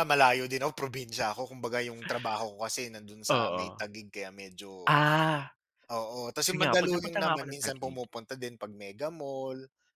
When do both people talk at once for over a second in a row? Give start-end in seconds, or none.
6.4-8.0